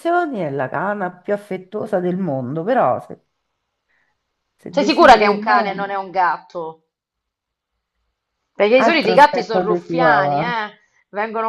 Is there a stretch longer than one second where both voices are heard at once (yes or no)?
yes